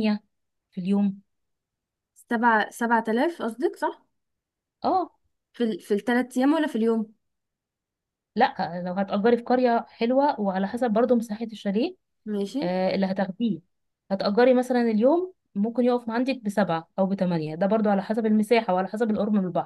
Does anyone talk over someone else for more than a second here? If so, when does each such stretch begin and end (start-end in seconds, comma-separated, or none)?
none